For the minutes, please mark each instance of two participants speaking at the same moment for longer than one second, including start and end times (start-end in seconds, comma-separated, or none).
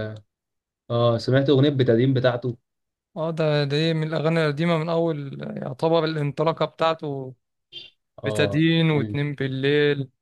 none